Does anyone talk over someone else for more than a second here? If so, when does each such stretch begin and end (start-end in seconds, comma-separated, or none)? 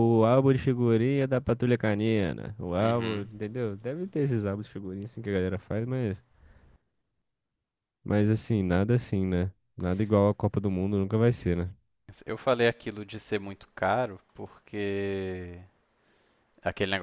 none